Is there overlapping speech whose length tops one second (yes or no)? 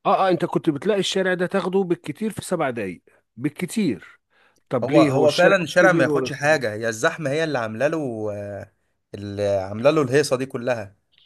yes